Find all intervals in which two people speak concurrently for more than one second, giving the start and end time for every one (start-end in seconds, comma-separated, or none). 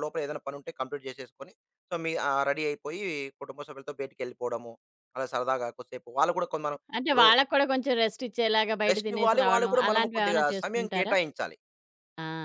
8.9-11.1